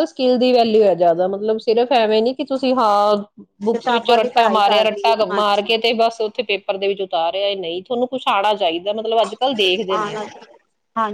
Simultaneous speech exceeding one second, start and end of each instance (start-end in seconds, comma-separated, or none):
3.7-5.7